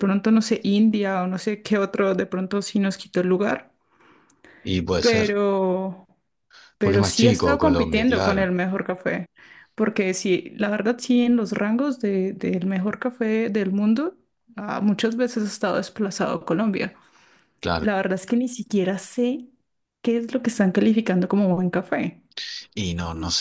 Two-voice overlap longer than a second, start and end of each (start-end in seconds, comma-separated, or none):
6.8-8.5